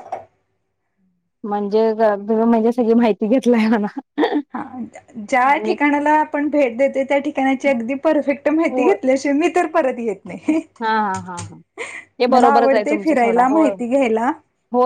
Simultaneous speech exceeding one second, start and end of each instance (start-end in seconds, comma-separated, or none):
12.3-13.7